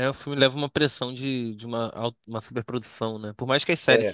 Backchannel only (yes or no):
yes